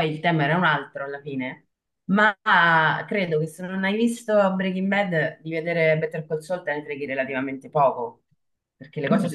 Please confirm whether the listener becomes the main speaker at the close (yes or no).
yes